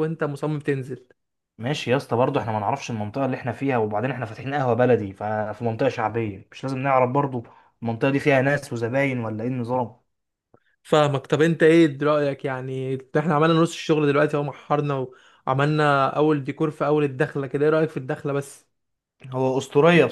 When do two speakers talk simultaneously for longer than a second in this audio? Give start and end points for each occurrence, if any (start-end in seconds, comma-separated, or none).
none